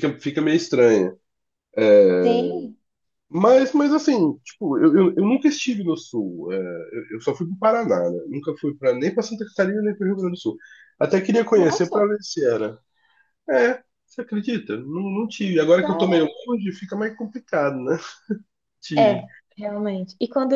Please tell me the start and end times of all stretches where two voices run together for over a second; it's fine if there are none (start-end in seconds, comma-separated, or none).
none